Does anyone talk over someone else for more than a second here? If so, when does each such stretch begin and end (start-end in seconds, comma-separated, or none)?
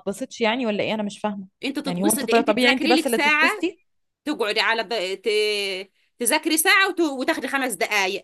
1.9-3.6